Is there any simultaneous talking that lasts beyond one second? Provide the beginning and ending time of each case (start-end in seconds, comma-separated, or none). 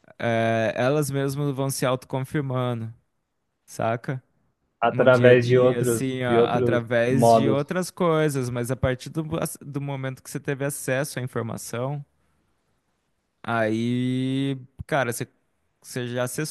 4.9-7.7